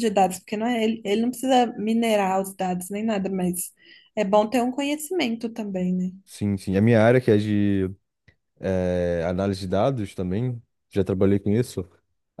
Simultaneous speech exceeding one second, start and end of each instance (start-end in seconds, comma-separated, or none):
none